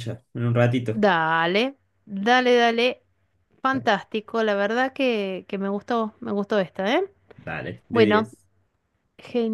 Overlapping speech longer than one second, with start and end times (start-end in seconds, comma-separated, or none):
none